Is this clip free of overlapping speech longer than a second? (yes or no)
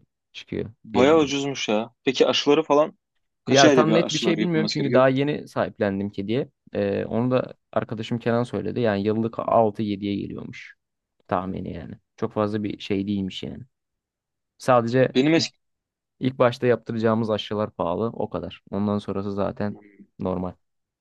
no